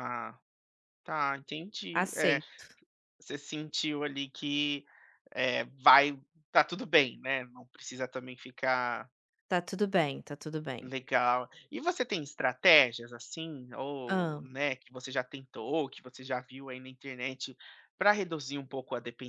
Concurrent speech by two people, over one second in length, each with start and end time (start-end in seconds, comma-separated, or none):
none